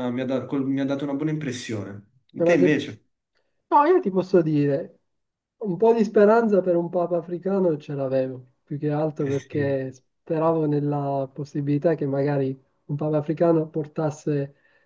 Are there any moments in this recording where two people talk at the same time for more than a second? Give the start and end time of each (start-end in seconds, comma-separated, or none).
none